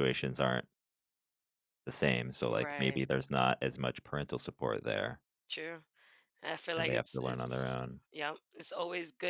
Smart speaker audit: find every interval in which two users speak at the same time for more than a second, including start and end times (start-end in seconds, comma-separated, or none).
6.8-8.0